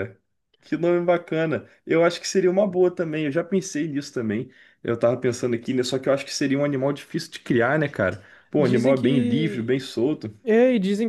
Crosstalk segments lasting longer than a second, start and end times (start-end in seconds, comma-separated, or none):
8.6-9.8